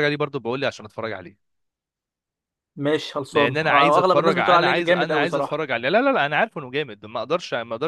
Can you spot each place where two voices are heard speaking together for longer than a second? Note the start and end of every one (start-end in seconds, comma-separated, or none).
3.3-5.7